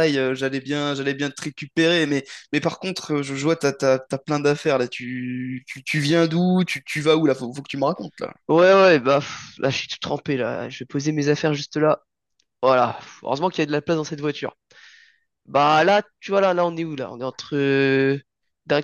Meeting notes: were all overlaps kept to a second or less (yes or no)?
yes